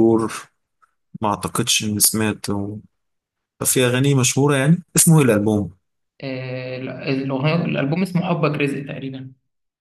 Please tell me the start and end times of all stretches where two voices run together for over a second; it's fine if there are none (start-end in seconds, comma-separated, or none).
none